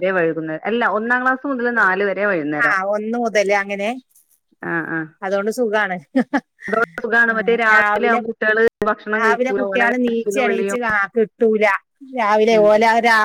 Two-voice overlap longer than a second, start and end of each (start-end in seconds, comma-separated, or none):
9.2-10.8